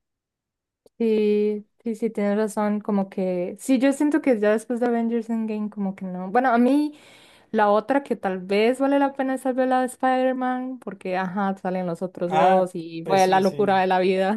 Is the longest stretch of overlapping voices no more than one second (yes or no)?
no